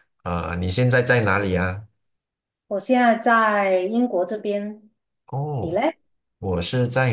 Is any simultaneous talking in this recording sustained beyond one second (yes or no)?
no